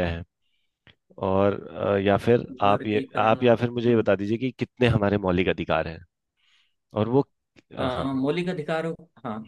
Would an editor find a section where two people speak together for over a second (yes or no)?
yes